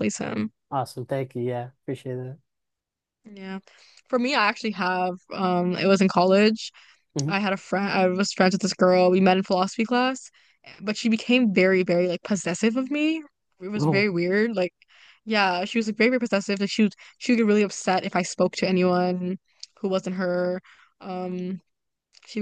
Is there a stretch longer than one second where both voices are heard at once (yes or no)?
no